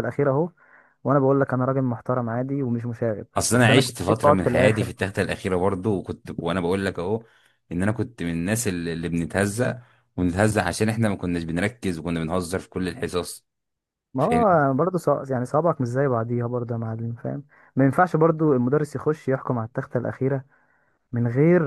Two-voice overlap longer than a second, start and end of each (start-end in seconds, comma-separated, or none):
3.4-4.9